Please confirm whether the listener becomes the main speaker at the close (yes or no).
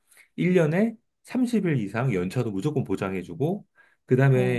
no